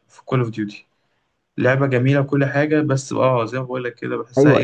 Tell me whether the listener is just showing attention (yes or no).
no